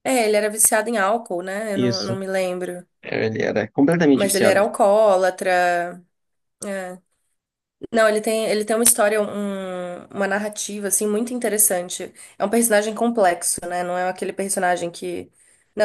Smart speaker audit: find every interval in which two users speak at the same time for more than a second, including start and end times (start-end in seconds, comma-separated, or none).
none